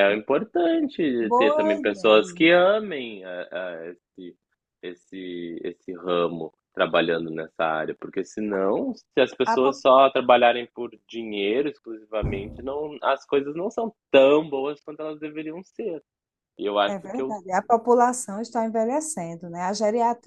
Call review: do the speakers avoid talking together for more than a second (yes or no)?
no